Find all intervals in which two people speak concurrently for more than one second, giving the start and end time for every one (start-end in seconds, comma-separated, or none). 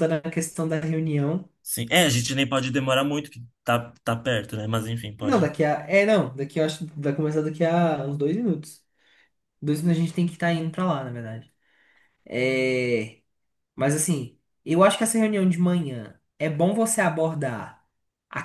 none